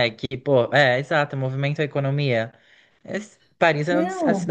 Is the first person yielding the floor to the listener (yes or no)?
no